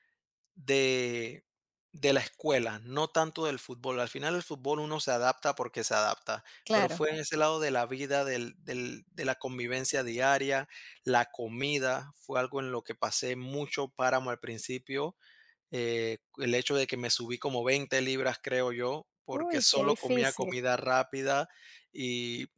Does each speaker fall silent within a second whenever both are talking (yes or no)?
no